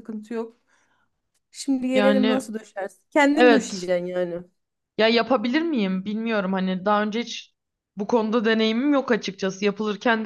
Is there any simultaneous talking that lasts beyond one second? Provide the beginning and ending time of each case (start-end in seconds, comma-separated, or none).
none